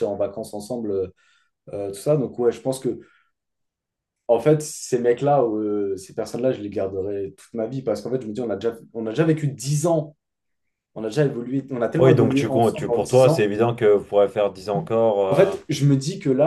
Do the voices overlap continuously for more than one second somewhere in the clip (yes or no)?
yes